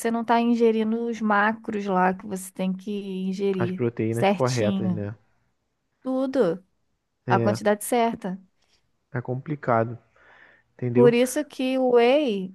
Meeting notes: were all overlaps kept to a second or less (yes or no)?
no